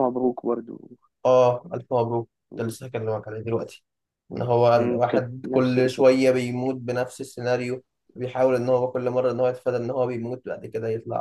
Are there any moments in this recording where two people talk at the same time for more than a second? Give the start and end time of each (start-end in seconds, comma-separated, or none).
4.7-6.2